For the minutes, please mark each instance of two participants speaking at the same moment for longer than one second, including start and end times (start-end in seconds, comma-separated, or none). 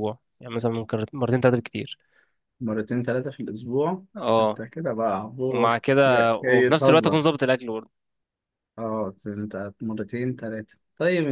5.5-7.2